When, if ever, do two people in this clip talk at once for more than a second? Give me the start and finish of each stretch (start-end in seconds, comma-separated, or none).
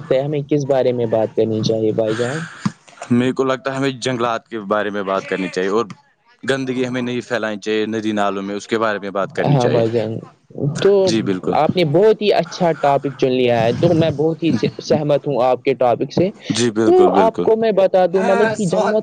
none